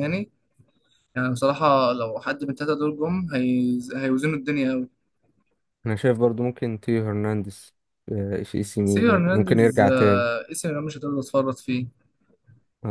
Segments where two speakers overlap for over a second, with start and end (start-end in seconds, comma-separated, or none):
8.8-10.3